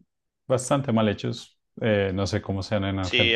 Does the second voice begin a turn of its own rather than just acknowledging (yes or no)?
yes